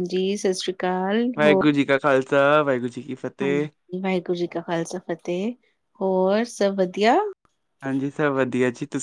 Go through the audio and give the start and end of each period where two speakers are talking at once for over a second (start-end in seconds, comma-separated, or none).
none